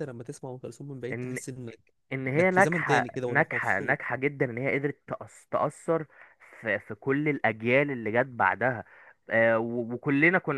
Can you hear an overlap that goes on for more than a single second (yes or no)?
yes